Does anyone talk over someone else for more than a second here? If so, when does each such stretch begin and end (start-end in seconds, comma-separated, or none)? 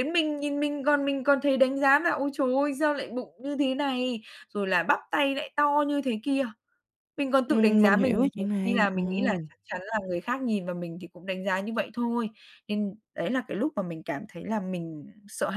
7.5-9.0